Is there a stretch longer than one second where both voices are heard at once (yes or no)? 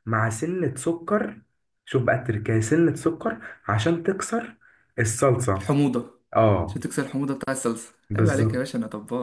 no